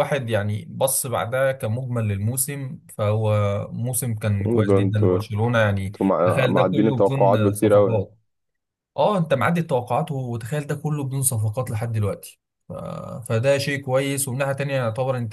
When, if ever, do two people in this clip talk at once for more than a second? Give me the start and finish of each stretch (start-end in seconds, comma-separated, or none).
5.8-8.1